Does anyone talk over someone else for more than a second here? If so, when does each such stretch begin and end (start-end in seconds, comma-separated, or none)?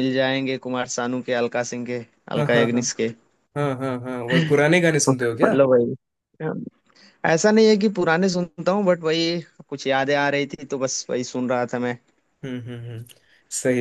none